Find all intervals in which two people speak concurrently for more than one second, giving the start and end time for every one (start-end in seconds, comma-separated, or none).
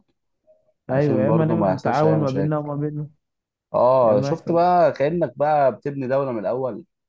0.9-2.5